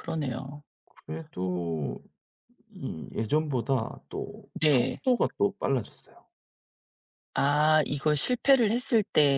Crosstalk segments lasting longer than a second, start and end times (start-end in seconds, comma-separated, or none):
none